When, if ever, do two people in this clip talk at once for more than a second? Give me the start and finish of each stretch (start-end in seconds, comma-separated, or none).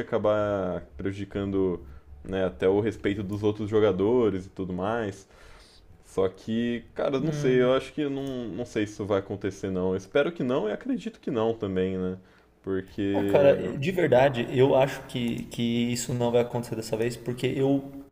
none